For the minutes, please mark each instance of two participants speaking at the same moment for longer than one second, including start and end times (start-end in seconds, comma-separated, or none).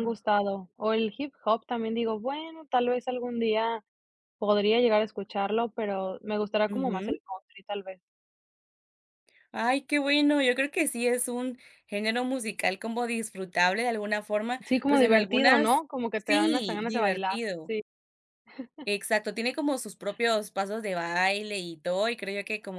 14.7-17.7